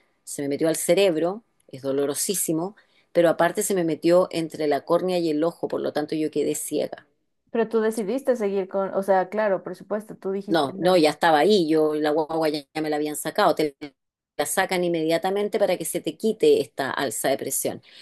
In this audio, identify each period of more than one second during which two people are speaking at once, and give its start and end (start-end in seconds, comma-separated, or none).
none